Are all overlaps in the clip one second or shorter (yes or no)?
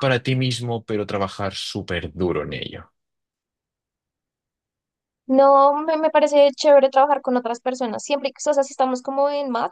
yes